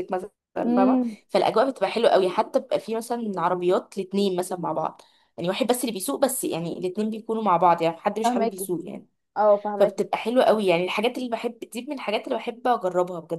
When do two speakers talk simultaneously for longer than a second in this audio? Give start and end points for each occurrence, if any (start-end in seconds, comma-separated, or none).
none